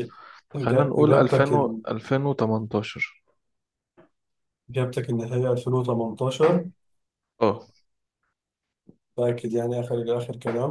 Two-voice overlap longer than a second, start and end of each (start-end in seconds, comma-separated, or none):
0.6-1.8